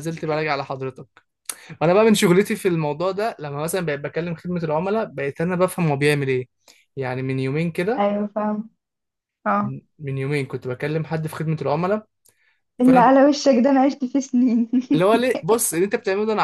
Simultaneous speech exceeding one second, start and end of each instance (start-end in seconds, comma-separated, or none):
none